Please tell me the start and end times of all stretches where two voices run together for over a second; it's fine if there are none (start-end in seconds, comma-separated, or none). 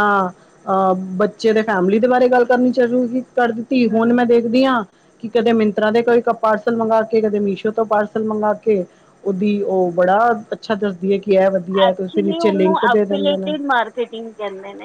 11.9-13.5